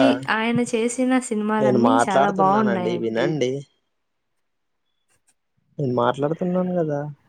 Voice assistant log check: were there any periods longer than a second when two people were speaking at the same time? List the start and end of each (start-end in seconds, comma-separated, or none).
1.6-3.3